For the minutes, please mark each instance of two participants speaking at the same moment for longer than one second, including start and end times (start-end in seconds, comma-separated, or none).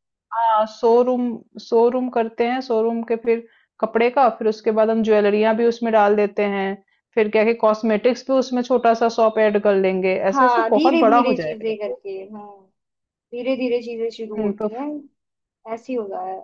10.3-11.9